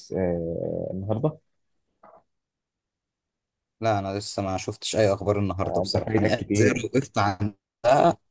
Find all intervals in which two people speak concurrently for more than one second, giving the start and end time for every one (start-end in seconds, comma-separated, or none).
5.6-6.9